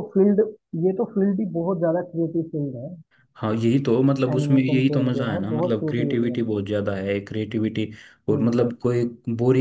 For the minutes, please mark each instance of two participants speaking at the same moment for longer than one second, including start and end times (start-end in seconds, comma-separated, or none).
4.3-6.5